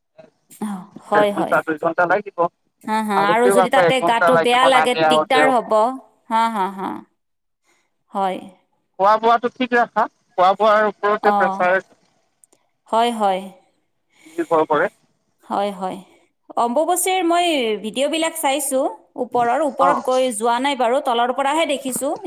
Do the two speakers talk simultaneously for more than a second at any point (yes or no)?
yes